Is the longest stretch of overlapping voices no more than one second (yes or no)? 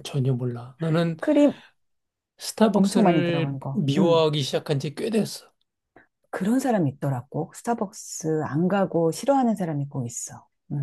no